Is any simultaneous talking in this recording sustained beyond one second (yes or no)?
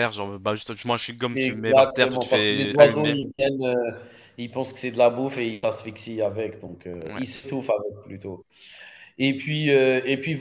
yes